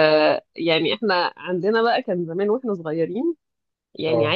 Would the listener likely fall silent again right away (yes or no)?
yes